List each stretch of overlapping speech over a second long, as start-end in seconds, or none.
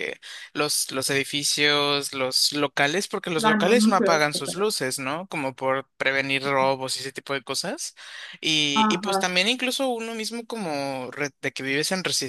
3.4-4.7